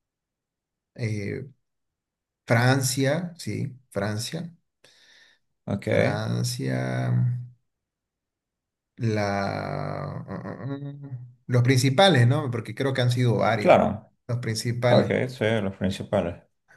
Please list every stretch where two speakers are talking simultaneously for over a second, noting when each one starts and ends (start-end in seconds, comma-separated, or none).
none